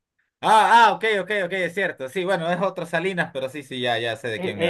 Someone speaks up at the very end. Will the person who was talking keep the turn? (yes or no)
no